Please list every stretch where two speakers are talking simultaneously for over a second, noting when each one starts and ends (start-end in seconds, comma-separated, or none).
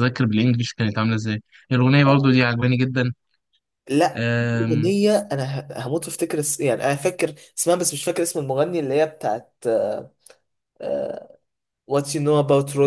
none